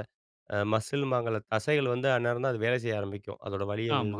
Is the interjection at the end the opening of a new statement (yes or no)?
yes